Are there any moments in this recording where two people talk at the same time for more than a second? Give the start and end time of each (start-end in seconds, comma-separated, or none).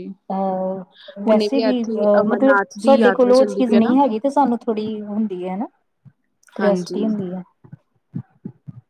1.2-3.9